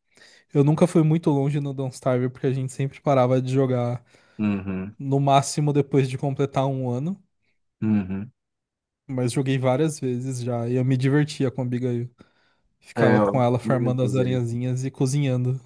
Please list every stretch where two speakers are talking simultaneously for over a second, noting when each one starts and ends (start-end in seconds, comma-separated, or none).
12.9-14.4